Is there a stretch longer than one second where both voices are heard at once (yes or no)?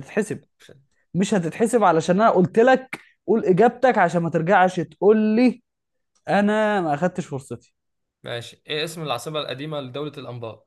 no